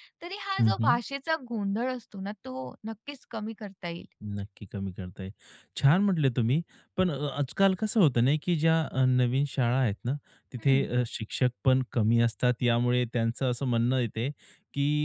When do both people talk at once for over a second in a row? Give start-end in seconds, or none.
none